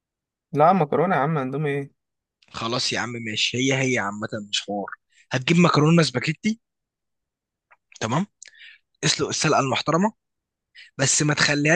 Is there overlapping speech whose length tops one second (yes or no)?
no